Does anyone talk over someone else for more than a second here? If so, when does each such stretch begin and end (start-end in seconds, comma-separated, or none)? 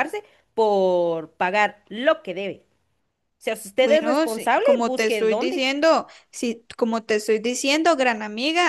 3.8-5.7